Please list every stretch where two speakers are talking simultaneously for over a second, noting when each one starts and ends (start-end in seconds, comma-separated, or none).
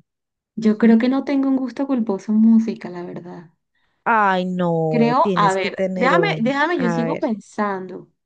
4.9-7.3